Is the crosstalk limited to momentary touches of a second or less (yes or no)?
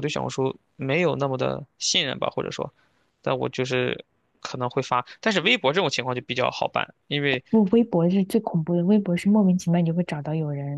yes